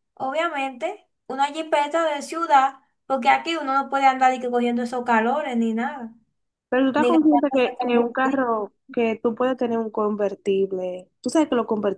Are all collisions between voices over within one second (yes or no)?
no